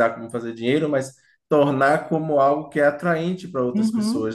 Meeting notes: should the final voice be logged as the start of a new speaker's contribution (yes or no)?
yes